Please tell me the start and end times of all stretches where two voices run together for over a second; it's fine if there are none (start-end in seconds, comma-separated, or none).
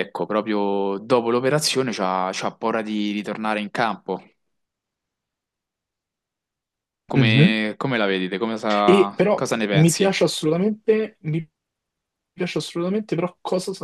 8.8-10.2